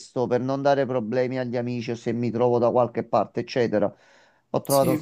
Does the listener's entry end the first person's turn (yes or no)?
no